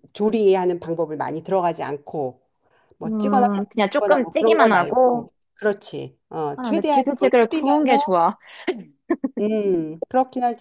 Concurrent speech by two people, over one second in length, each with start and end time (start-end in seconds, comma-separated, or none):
3.0-5.3, 6.5-8.2